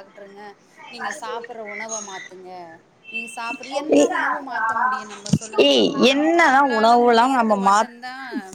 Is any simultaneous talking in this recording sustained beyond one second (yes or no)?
yes